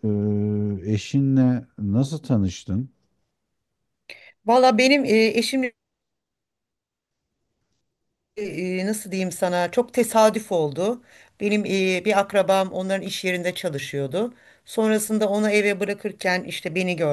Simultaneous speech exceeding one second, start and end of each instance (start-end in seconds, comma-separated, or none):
none